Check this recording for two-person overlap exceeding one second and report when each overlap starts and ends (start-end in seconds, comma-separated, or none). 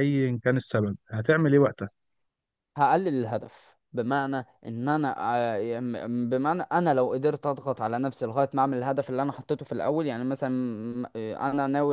none